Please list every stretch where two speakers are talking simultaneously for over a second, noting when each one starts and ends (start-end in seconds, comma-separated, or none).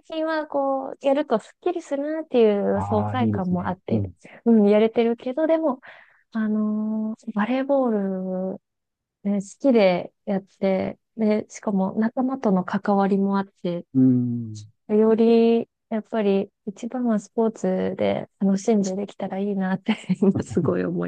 2.7-4.1